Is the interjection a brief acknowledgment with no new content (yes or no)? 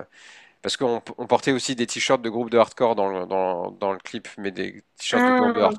yes